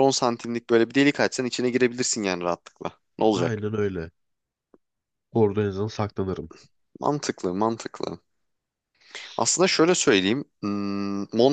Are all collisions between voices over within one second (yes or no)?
yes